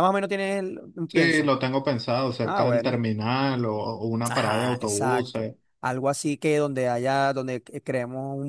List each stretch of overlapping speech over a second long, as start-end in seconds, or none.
4.3-5.5